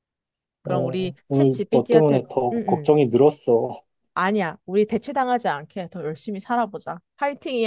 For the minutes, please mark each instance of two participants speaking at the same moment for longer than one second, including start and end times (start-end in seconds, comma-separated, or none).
0.6-3.0